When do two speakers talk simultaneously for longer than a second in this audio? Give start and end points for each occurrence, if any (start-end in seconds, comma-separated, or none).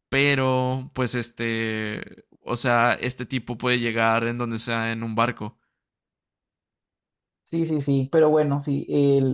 none